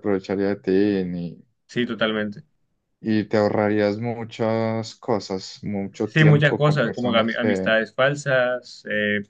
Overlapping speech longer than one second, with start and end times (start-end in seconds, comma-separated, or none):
6.0-7.8